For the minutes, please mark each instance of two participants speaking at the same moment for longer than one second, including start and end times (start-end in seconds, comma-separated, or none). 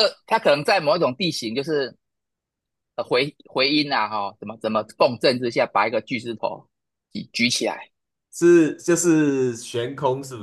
none